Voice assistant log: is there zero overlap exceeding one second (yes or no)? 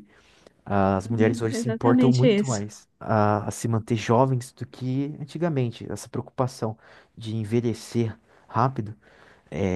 no